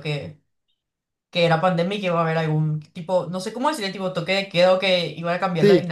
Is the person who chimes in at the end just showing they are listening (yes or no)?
yes